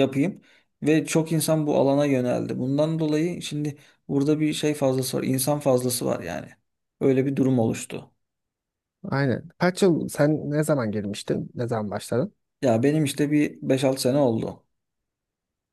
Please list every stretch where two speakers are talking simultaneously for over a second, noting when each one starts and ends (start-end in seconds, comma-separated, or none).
none